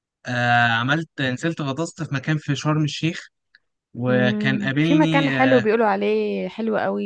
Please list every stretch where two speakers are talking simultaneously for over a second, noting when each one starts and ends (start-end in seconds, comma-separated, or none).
4.1-5.7